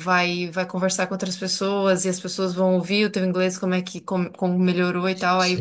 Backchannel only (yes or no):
yes